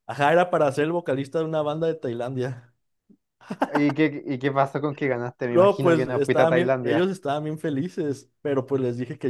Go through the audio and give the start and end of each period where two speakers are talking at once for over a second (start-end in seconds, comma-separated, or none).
5.5-7.1